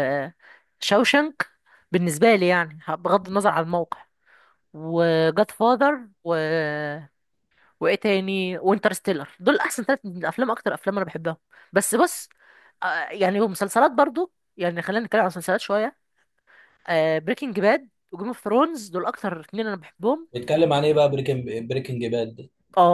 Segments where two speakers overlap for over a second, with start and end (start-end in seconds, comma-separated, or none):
none